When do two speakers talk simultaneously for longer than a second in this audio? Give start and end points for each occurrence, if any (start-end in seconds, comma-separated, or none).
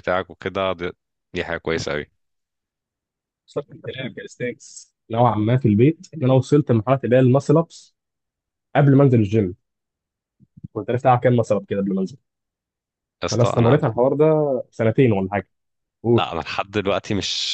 none